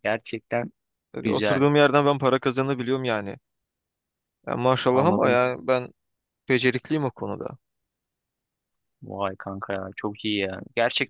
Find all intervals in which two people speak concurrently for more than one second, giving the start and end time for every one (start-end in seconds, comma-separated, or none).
none